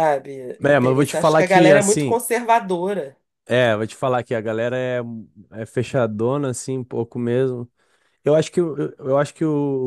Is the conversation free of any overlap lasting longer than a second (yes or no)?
no